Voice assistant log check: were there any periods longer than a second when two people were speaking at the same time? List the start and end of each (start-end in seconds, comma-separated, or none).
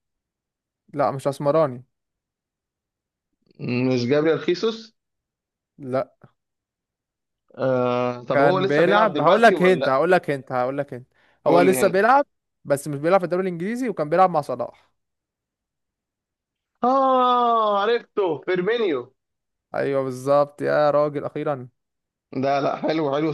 8.3-10.0